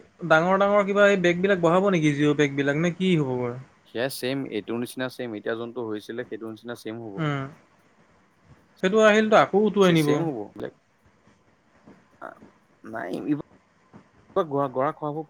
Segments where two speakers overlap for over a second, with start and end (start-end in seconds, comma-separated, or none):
none